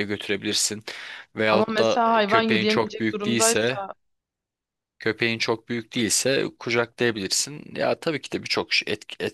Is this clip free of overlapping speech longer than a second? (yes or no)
no